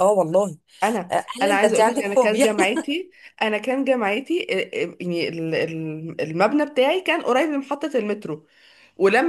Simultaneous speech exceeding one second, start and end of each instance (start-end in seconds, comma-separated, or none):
1.1-2.5